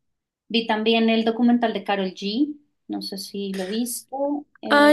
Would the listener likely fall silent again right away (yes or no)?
no